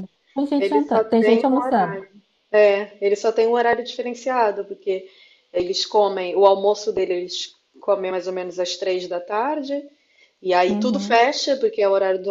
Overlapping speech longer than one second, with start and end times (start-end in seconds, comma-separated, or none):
0.6-2.0